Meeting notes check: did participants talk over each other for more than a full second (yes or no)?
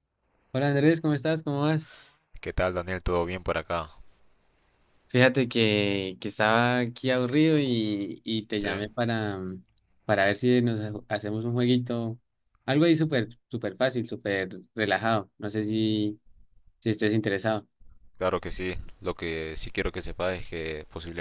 no